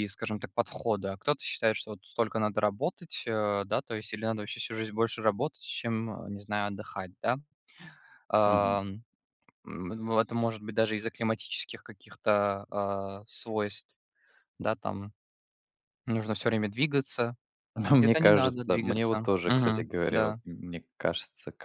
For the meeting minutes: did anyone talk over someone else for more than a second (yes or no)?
yes